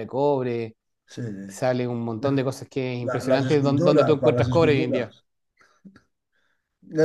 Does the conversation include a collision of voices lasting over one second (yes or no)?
yes